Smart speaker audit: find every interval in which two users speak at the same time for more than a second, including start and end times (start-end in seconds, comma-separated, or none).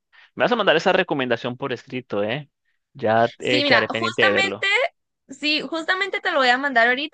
3.4-4.7